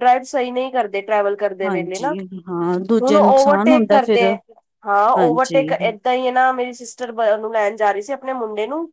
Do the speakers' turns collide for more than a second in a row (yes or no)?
yes